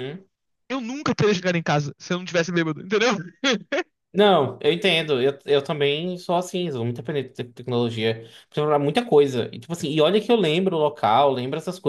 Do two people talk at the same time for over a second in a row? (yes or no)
no